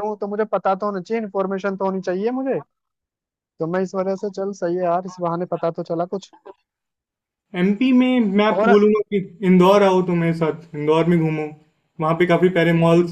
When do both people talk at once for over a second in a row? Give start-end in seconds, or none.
none